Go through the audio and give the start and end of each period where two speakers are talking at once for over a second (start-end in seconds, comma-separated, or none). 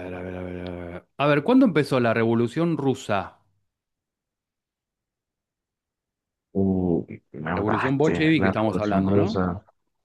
7.5-9.4